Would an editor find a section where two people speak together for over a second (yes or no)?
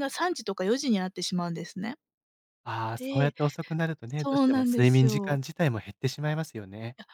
yes